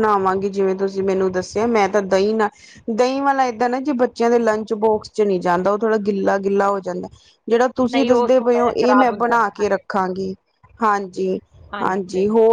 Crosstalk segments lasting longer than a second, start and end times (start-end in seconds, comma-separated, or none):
7.9-9.8